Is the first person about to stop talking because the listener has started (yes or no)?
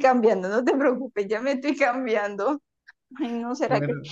no